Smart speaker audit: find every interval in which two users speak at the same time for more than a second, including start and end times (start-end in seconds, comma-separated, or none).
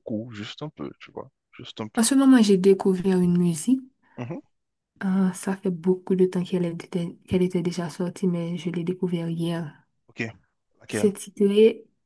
none